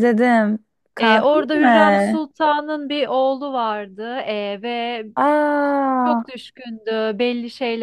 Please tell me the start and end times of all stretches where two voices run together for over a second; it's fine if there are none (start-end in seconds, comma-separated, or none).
1.0-2.2